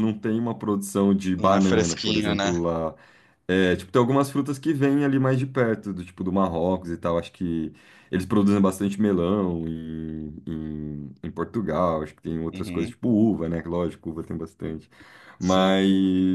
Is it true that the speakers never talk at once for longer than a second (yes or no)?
no